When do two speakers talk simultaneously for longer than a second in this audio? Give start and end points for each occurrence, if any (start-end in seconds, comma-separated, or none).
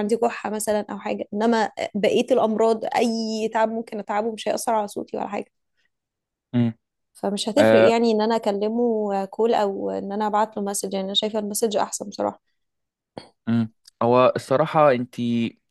none